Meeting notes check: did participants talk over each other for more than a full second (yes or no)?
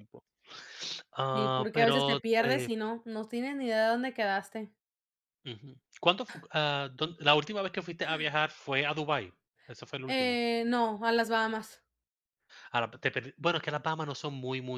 yes